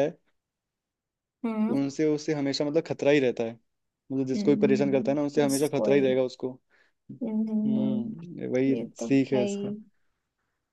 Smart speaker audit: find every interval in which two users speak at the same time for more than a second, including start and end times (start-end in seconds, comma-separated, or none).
4.3-6.2, 7.7-9.7